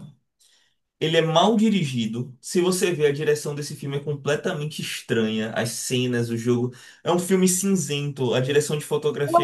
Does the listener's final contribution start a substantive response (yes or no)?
yes